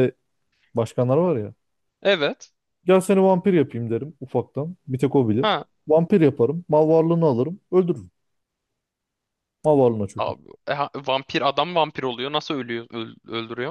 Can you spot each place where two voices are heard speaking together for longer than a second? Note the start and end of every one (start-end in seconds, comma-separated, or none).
none